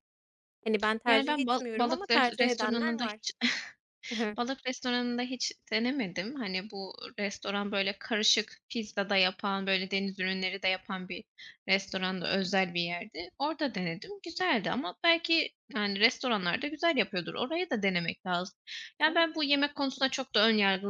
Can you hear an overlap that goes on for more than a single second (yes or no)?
yes